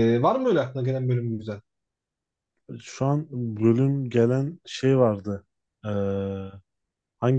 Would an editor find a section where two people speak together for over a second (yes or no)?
no